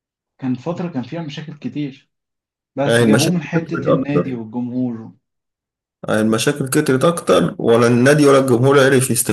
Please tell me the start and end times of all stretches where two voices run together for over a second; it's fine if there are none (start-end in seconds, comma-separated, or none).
2.8-4.4